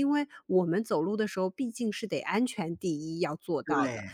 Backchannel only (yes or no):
yes